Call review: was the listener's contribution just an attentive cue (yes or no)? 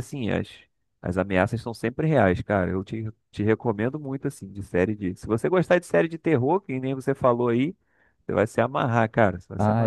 no